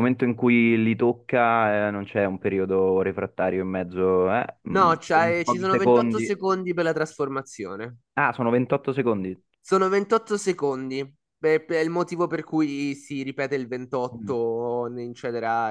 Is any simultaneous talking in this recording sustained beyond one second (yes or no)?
yes